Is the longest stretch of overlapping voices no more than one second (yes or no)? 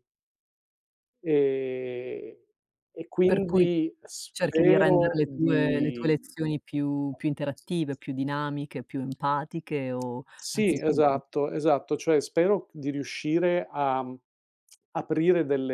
no